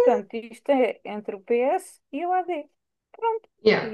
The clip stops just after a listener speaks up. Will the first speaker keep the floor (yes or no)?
no